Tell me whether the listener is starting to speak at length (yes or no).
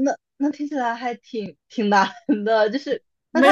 yes